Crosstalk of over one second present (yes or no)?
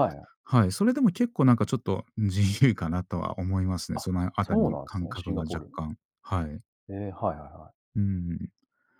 yes